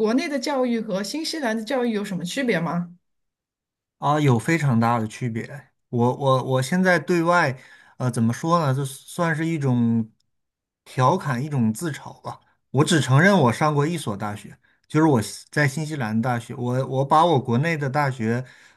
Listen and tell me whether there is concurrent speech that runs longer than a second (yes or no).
no